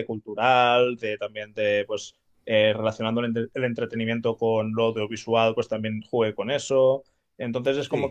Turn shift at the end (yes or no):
no